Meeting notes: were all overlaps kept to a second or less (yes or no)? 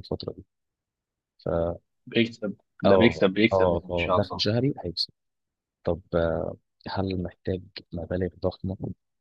no